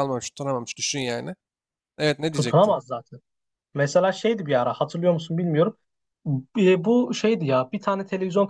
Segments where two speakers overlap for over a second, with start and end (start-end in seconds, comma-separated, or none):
none